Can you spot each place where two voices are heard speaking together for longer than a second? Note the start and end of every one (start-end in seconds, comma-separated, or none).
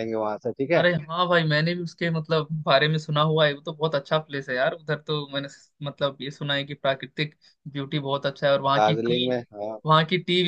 none